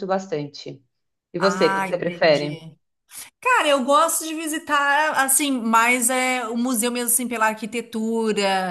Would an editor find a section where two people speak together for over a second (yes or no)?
yes